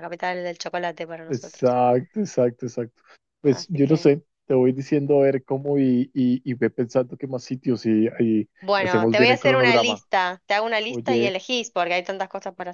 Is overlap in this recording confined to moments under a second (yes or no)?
no